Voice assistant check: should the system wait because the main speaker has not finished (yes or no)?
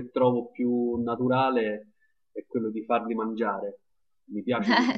no